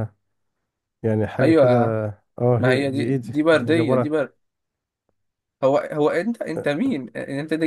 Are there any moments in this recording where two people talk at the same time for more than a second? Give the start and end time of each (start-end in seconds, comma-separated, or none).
2.6-4.1